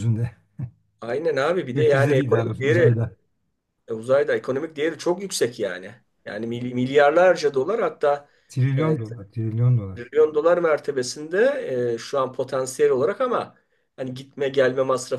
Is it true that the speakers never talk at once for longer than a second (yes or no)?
no